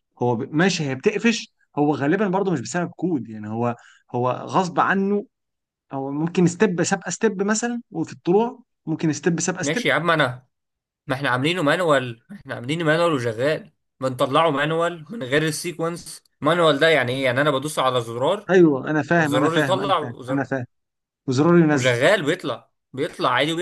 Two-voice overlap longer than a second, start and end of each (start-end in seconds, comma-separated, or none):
19.2-20.5